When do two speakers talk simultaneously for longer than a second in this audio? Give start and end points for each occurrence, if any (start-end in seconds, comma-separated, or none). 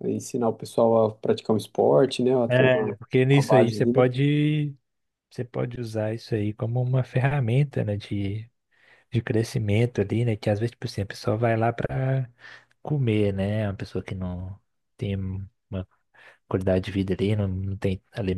2.5-4.0